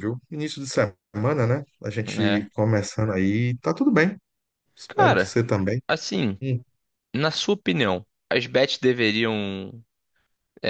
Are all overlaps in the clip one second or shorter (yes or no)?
yes